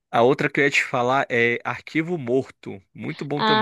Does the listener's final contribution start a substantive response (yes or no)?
yes